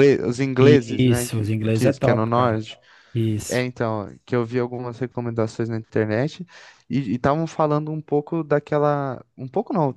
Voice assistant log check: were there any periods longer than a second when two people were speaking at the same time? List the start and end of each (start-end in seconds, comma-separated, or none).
0.6-2.6